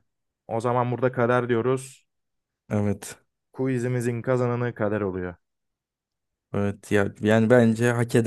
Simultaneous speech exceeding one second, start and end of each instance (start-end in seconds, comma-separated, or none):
none